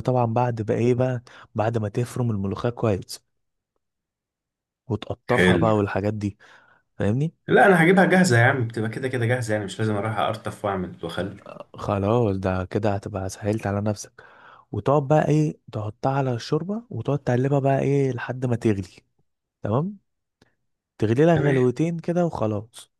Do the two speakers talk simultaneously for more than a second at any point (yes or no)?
no